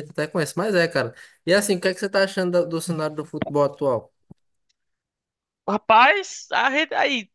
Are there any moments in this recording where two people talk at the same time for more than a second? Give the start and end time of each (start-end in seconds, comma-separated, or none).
none